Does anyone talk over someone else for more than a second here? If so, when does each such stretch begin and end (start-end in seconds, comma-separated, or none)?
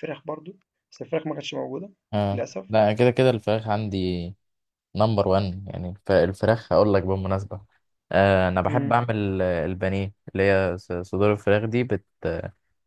none